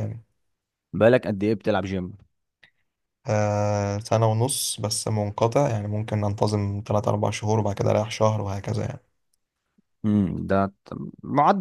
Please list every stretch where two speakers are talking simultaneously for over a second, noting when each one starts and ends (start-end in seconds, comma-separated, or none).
none